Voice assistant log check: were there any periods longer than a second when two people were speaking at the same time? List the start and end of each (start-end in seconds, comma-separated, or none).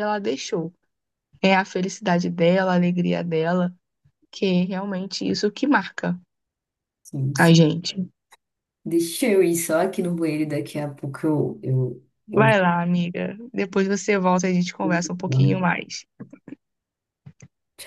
none